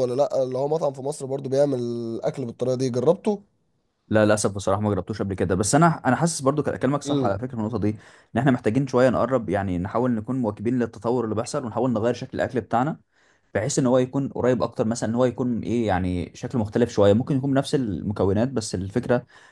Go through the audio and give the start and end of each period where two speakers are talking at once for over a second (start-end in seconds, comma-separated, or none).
none